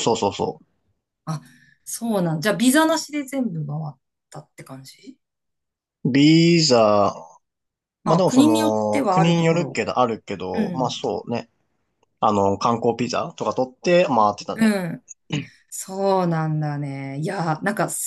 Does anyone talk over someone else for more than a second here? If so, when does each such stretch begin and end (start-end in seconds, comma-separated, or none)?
8.1-9.8